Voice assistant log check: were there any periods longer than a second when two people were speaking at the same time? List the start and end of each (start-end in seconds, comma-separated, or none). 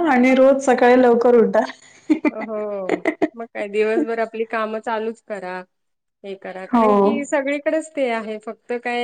none